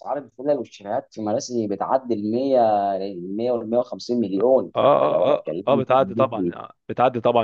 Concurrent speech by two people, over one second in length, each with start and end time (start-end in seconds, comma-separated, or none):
4.4-6.5